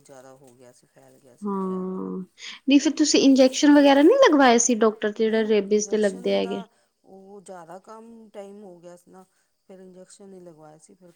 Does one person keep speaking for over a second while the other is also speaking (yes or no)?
yes